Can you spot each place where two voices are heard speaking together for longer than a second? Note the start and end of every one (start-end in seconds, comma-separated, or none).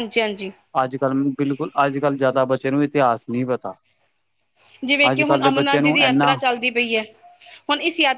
5.1-6.4